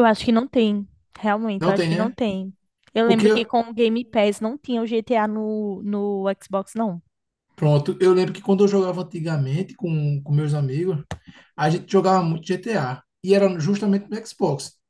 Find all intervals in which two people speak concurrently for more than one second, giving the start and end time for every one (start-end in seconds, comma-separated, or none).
none